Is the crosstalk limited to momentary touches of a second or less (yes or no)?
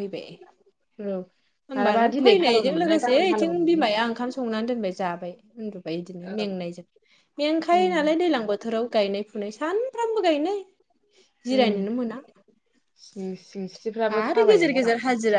no